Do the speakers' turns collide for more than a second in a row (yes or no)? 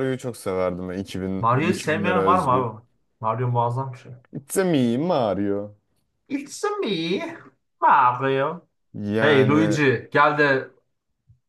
yes